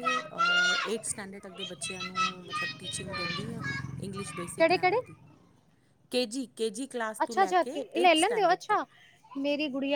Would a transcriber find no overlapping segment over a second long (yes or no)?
no